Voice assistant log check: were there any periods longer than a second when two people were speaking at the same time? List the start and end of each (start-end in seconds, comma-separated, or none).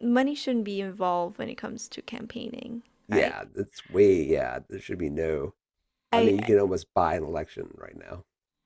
none